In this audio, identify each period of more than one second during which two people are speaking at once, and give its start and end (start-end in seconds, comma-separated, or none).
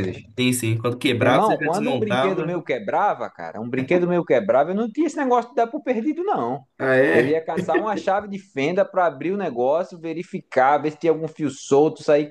1.2-2.6